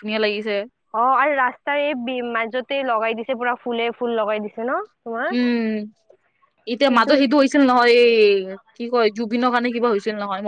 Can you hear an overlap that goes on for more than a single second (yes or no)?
no